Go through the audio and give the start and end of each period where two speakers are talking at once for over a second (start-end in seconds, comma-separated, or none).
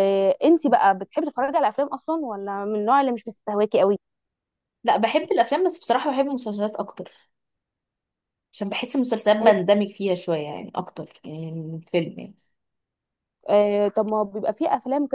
none